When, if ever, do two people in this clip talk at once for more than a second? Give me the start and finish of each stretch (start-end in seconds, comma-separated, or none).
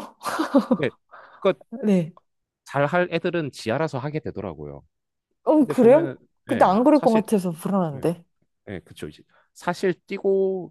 5.6-7.2